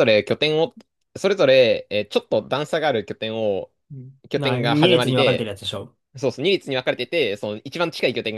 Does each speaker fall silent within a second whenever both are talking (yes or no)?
no